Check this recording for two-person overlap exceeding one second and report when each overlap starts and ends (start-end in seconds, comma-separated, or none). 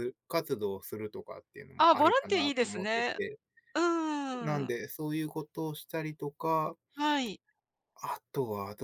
1.8-3.2